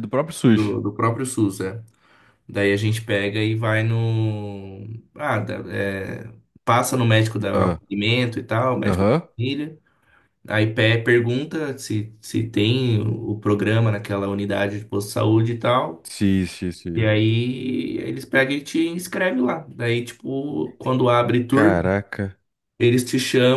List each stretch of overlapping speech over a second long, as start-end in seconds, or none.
none